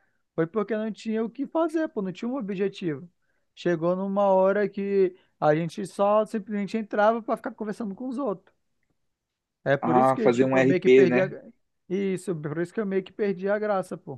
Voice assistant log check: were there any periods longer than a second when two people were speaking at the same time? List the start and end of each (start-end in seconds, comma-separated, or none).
9.8-11.3